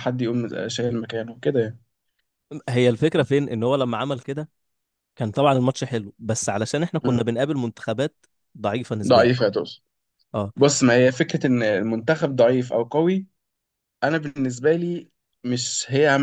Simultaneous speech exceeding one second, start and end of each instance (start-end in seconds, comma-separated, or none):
none